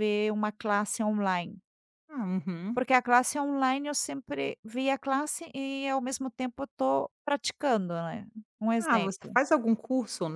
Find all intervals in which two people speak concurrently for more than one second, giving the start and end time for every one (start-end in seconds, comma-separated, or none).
none